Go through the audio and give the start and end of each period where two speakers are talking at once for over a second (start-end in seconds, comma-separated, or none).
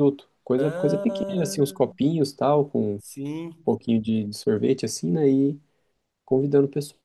0.6-1.9